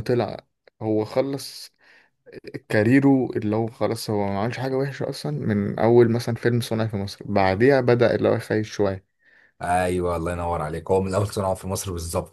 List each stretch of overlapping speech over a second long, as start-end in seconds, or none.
none